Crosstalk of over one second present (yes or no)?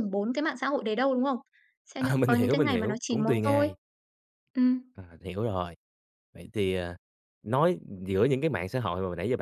yes